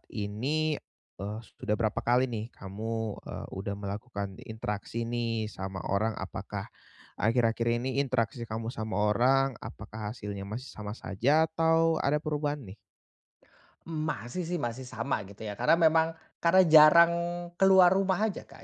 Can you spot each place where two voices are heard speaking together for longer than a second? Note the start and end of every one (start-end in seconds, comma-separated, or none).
none